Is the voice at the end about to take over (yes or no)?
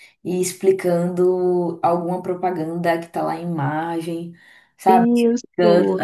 no